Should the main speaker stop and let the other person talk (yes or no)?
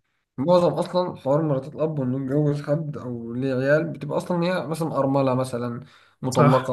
yes